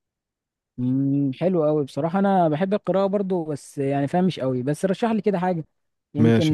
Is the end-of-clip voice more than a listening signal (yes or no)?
yes